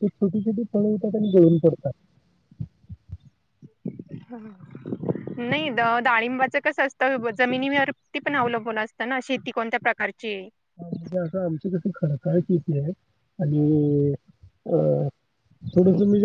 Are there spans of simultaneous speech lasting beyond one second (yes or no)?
no